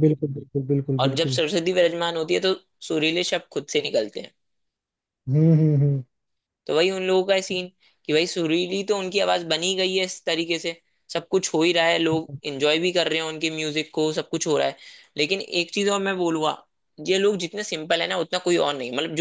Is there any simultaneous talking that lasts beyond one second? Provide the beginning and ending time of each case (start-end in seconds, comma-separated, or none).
none